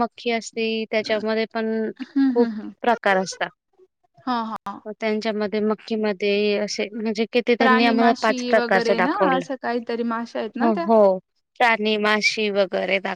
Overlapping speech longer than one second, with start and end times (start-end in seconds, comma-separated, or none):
7.6-9.5